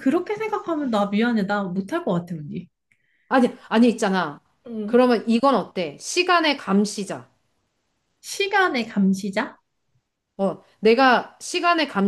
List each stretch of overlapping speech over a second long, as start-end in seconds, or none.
none